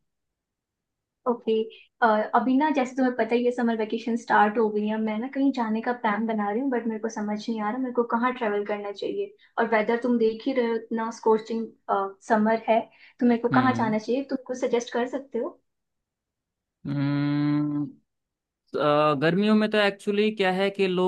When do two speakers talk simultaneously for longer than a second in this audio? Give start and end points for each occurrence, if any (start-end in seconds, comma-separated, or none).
none